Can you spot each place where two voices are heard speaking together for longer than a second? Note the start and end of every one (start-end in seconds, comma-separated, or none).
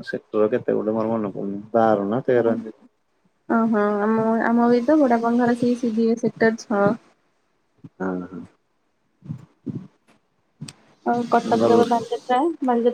none